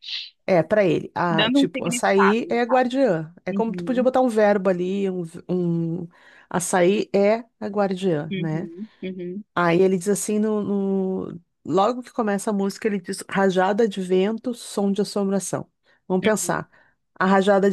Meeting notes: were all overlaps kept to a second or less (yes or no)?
no